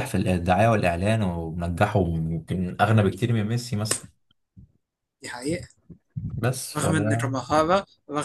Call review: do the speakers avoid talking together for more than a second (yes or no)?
yes